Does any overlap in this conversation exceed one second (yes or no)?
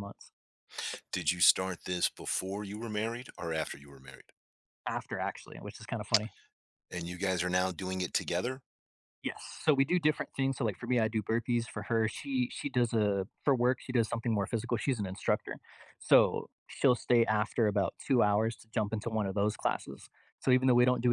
no